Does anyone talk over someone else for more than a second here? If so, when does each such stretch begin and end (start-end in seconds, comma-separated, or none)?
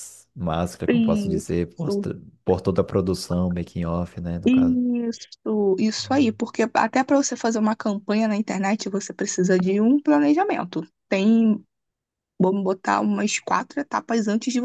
0.9-2.1